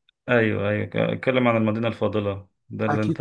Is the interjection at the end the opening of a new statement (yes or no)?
no